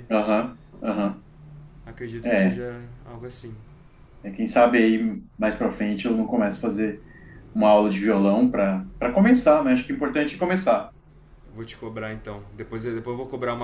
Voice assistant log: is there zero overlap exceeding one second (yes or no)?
yes